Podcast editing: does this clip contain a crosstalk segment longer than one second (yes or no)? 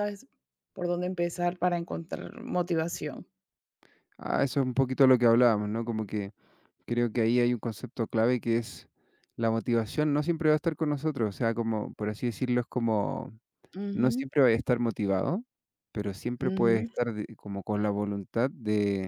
no